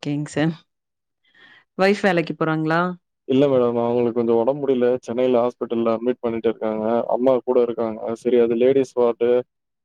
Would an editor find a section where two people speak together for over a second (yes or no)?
no